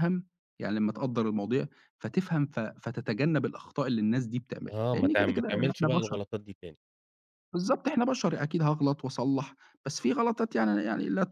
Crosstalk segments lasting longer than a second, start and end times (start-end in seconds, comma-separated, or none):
4.7-6.2